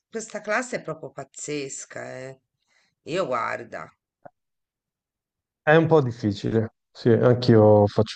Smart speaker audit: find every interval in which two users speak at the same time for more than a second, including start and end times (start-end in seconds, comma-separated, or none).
none